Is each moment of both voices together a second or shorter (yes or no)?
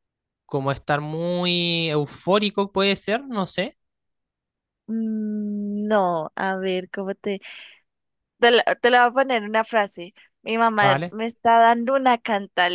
yes